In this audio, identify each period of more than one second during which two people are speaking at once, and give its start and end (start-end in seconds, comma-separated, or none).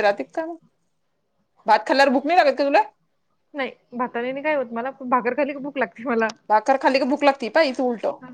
none